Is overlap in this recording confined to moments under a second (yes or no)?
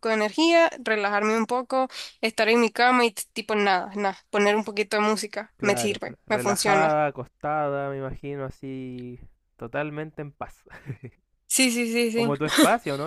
no